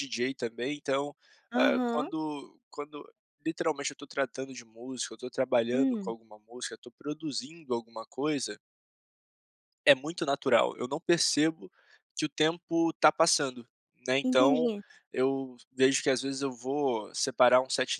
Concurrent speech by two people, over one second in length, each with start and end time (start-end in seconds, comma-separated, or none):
none